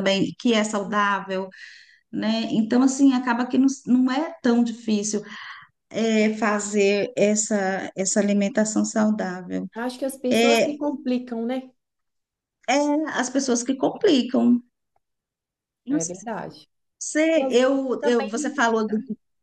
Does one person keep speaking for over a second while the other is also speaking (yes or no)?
yes